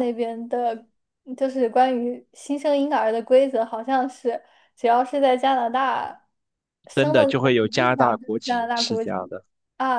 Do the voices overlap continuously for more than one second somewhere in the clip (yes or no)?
yes